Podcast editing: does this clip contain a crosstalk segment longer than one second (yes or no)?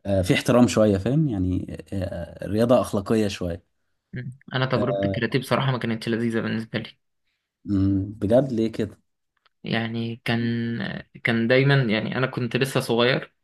no